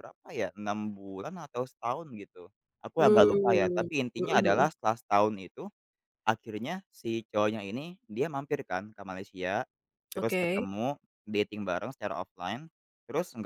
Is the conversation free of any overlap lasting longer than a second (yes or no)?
no